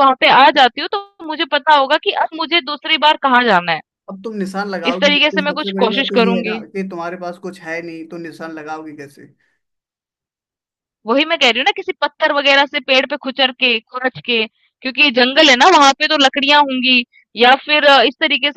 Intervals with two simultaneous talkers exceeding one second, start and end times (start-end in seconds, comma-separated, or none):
4.9-6.6